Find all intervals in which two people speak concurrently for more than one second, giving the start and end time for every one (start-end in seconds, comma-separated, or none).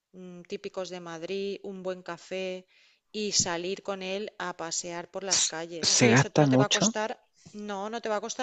5.3-6.9